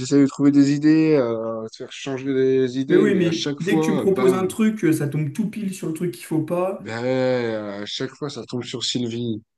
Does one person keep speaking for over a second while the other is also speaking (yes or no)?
yes